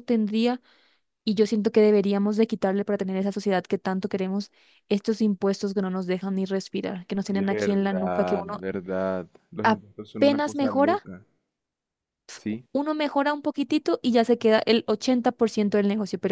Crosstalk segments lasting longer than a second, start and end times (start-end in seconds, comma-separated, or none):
7.3-8.6, 9.6-10.9